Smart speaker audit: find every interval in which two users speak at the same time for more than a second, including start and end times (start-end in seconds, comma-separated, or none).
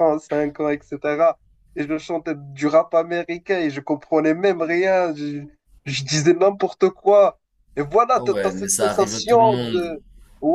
8.2-10.0